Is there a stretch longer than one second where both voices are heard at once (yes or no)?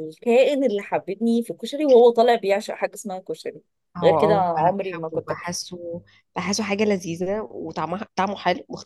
yes